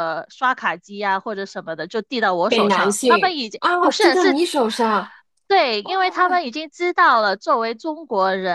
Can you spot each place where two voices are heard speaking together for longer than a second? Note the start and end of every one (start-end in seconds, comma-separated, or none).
2.5-4.4